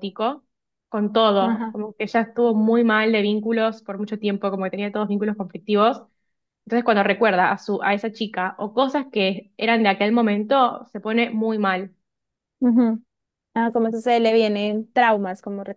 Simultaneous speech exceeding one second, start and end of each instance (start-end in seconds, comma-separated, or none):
none